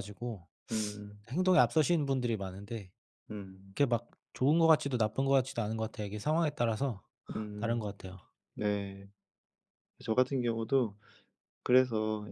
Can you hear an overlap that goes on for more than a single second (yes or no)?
no